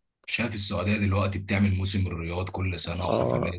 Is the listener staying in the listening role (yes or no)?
yes